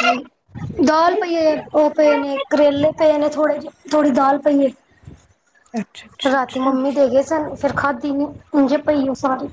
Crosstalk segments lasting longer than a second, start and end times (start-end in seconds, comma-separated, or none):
none